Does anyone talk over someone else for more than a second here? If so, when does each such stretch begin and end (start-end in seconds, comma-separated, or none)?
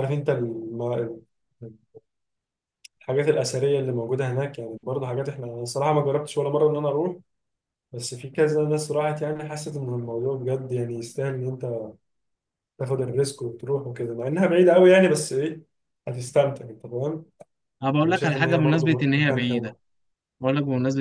18.0-19.8